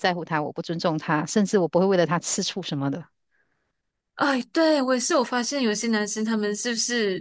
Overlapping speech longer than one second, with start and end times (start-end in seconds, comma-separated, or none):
none